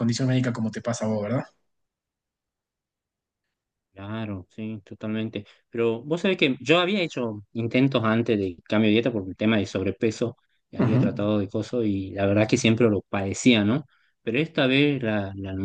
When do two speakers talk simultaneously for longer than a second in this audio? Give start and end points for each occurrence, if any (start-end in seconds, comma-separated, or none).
none